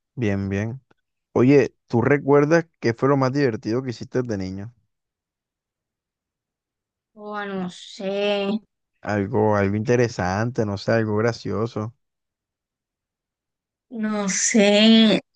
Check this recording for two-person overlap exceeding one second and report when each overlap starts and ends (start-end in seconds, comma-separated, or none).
none